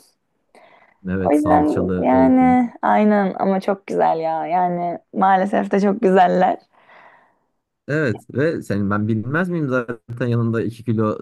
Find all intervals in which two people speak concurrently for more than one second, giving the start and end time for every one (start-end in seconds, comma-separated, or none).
1.2-2.6